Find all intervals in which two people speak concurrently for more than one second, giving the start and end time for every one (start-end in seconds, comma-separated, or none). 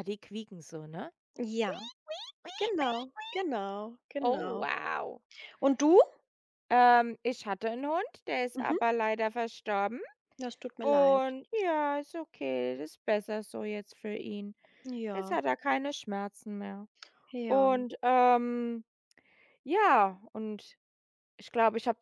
none